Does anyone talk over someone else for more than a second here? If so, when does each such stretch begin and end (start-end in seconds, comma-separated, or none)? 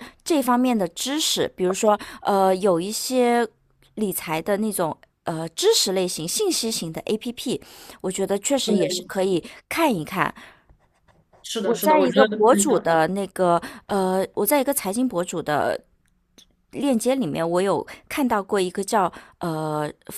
11.6-12.9